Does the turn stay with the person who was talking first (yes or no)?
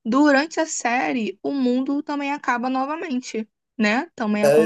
no